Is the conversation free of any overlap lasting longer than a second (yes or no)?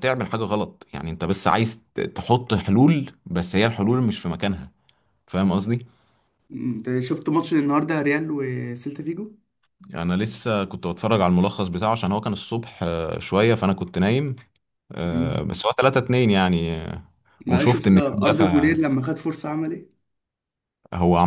no